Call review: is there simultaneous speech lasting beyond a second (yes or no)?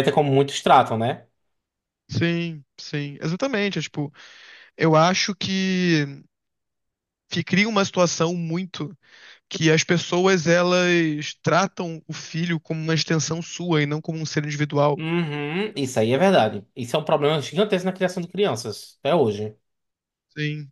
no